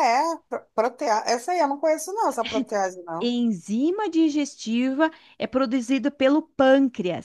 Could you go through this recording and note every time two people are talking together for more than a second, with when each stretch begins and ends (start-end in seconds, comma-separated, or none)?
none